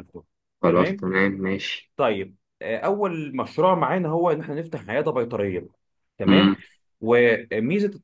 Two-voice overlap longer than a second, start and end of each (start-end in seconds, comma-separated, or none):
none